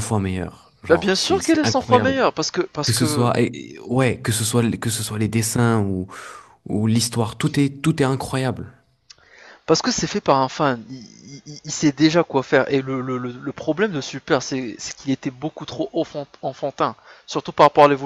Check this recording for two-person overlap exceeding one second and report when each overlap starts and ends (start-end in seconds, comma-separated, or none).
0.8-2.2